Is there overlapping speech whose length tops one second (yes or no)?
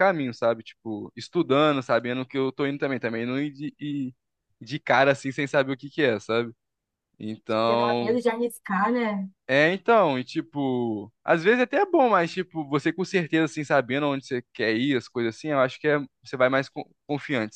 no